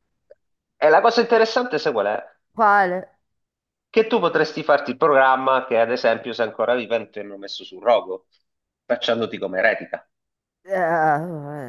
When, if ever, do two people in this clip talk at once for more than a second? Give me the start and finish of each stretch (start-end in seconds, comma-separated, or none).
none